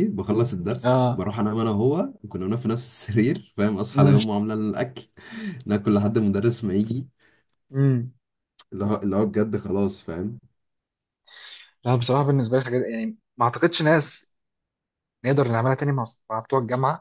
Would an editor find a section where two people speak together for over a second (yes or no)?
no